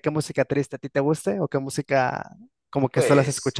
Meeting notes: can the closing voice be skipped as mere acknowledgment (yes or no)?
no